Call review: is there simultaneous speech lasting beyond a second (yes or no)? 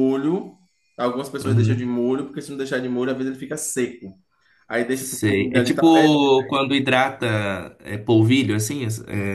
yes